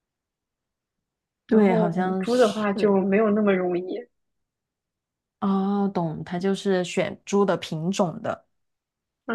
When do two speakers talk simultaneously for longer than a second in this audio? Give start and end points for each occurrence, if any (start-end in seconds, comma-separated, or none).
1.5-2.7